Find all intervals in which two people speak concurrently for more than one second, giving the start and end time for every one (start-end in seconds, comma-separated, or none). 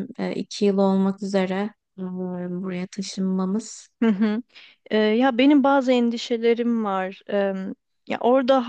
none